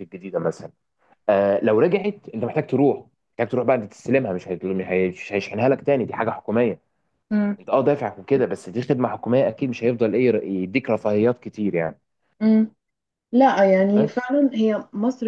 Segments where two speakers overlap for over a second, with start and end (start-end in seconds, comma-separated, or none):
none